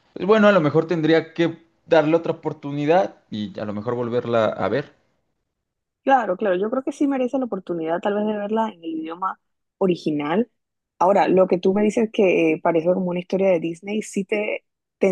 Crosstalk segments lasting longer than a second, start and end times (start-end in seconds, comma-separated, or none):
none